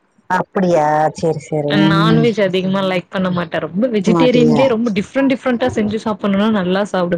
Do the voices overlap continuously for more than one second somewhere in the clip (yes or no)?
no